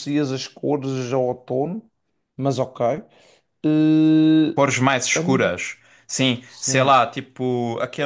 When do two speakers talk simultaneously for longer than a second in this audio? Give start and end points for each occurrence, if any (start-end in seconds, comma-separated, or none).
none